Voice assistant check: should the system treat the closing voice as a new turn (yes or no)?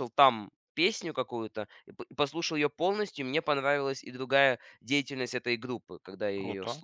yes